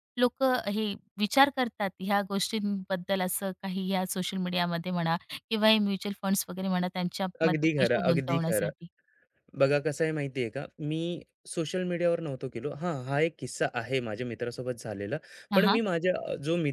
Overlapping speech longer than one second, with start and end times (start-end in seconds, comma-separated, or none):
7.4-8.7